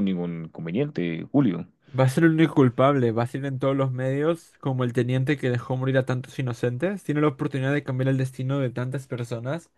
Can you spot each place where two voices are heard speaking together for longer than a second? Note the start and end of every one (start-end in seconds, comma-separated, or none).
none